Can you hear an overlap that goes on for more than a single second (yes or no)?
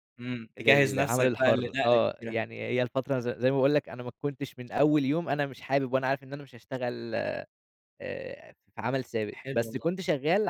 yes